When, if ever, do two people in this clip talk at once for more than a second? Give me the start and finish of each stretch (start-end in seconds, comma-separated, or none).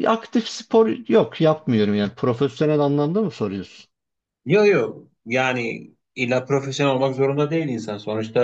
none